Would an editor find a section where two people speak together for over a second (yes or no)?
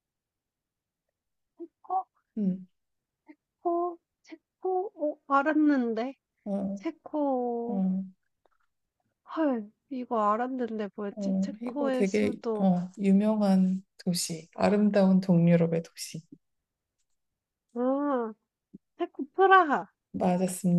yes